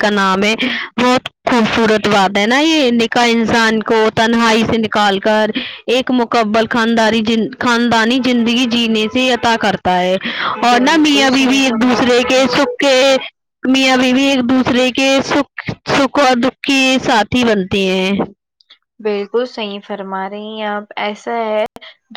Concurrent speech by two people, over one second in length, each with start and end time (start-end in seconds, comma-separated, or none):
10.7-12.5